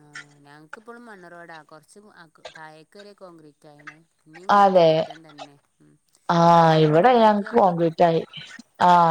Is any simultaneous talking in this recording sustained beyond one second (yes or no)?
yes